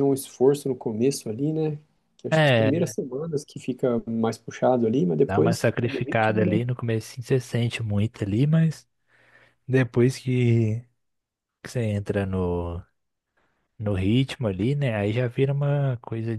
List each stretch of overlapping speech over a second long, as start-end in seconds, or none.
5.2-6.6